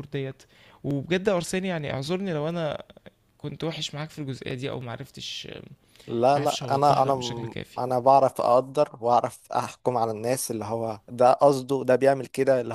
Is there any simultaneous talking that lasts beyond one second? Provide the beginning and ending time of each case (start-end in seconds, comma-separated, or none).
6.4-7.8